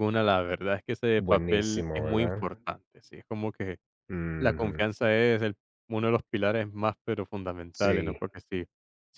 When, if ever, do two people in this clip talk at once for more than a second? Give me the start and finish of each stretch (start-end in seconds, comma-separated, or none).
1.2-2.5